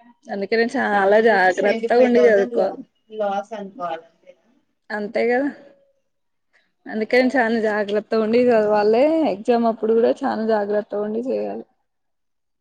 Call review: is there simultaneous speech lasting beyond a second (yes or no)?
yes